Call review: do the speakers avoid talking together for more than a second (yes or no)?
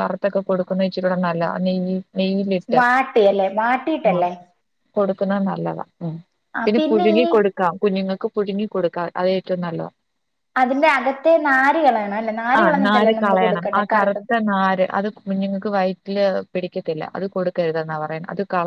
no